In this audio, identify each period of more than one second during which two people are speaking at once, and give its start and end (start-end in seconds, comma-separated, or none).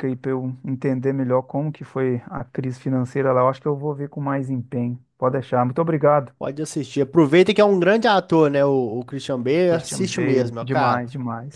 9.7-11.0